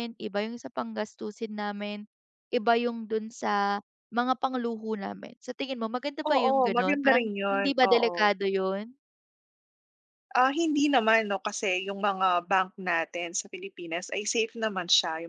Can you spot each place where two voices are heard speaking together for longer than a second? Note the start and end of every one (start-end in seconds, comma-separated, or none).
6.3-8.1